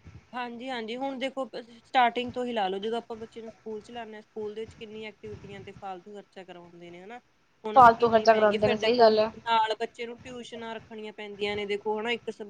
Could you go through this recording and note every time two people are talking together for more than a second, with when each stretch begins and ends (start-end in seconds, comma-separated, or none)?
7.7-9.3